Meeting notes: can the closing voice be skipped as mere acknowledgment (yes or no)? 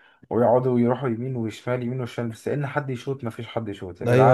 no